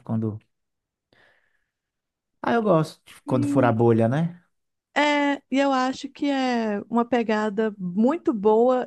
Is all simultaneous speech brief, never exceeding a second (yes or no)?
yes